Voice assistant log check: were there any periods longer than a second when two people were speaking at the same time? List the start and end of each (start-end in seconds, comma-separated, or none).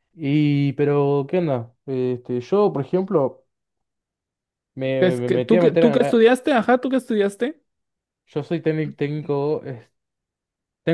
5.0-6.2